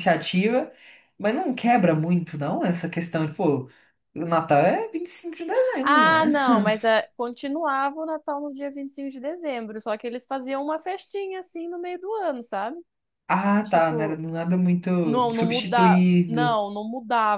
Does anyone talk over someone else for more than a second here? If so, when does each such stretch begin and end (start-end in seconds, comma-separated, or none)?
15.3-16.6